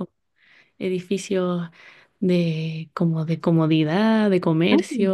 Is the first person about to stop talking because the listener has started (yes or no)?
yes